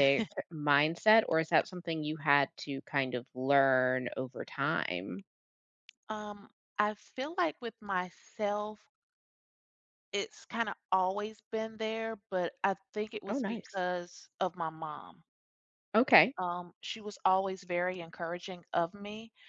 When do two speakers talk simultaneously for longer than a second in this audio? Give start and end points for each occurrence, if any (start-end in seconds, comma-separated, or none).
none